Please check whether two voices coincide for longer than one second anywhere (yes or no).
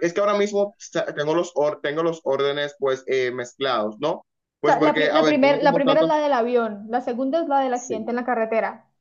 yes